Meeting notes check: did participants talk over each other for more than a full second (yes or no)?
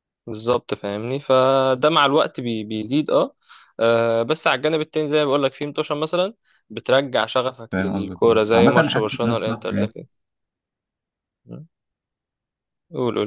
yes